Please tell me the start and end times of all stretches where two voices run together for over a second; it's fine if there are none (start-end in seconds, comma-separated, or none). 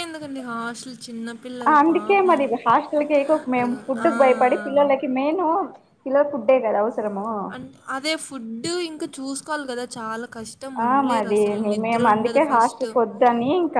10.9-12.8